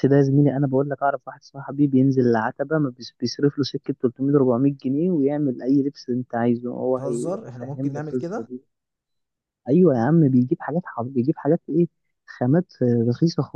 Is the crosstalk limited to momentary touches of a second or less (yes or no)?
no